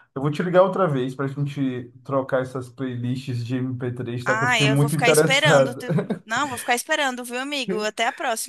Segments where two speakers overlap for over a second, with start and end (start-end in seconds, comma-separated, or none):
4.2-5.8